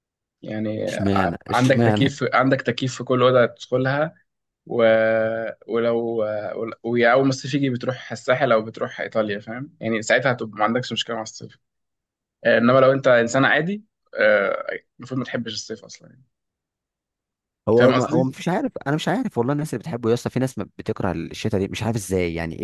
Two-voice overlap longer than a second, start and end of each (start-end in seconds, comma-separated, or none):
0.9-2.2